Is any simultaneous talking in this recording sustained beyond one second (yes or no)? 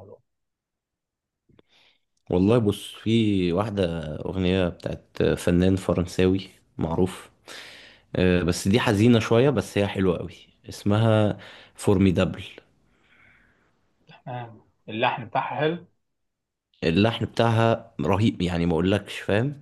no